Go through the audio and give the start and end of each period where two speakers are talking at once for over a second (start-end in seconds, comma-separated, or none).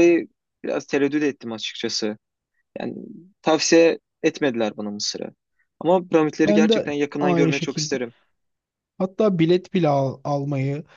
6.4-8.0